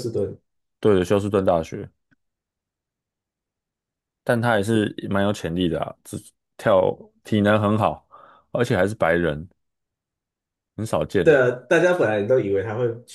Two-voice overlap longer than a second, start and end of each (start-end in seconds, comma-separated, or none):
none